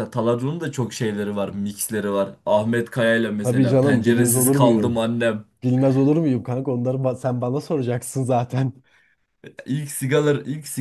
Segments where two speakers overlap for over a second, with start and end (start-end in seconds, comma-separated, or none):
3.4-5.0